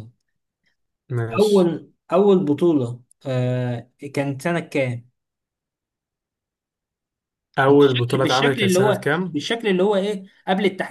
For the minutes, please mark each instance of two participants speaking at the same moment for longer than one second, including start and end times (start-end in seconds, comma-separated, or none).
7.7-9.4